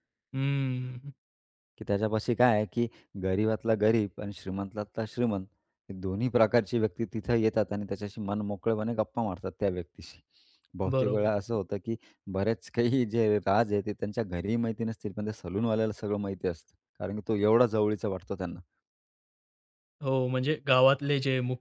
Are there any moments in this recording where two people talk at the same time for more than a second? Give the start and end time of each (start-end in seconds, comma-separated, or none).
none